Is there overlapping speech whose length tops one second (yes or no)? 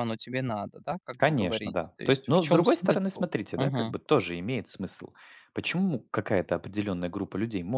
yes